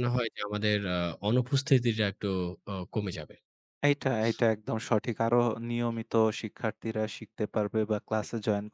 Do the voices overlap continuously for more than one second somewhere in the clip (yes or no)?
no